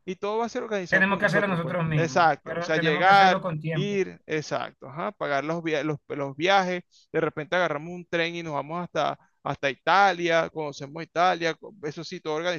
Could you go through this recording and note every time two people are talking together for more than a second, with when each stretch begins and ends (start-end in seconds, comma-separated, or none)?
0.9-4.0